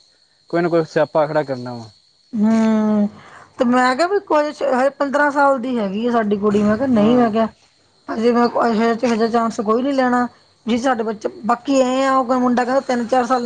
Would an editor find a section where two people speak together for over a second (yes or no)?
no